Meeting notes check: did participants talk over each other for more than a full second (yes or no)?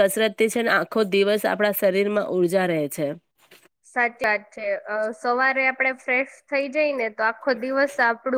no